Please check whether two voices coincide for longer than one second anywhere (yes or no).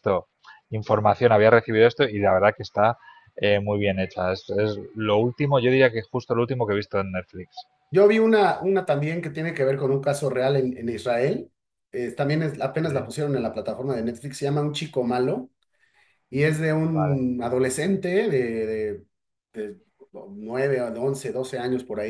no